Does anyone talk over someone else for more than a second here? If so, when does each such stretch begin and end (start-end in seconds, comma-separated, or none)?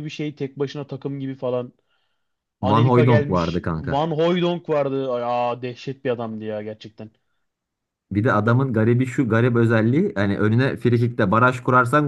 2.6-4.1